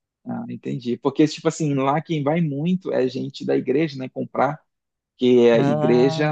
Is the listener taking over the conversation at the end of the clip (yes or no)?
no